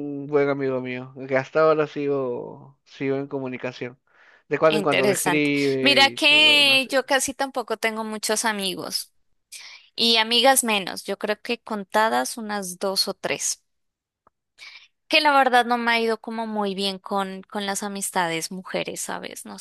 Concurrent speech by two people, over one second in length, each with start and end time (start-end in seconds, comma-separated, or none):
4.7-6.9